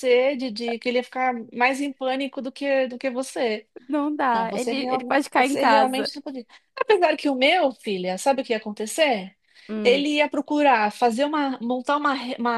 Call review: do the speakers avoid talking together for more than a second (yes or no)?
no